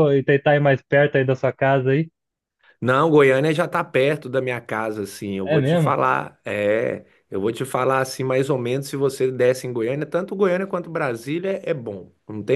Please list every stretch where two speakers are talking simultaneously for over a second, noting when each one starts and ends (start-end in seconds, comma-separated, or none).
none